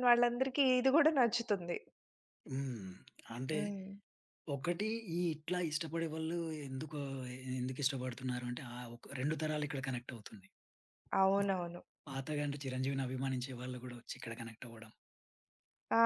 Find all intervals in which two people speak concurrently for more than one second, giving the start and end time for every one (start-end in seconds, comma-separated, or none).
none